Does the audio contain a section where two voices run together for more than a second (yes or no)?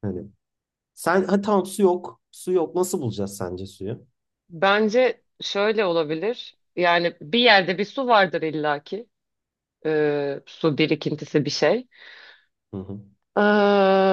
no